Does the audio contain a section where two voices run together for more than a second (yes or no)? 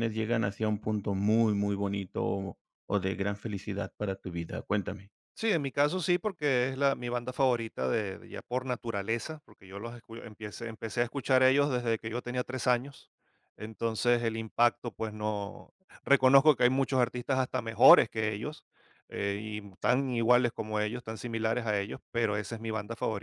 no